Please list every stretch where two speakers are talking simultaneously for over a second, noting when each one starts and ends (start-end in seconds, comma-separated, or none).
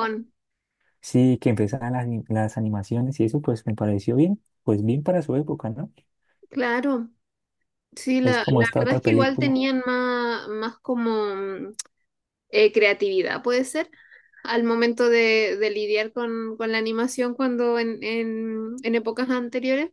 8.2-9.6